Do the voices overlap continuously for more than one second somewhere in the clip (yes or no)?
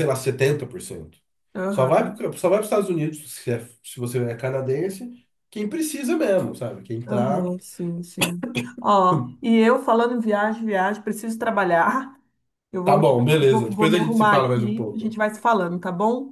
yes